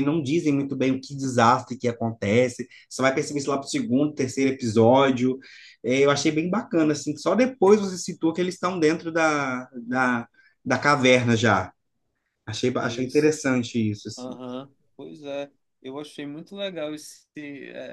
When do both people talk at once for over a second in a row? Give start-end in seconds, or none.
none